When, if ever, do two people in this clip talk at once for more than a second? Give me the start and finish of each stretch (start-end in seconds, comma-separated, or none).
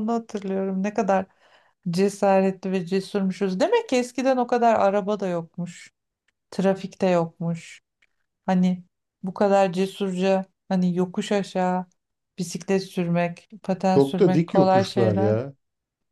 13.9-15.4